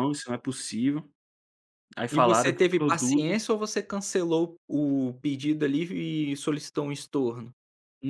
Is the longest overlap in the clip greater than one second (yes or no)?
yes